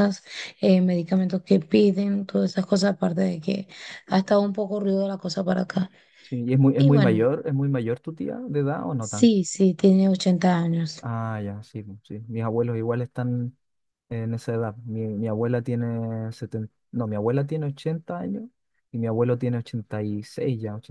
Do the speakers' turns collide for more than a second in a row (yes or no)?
no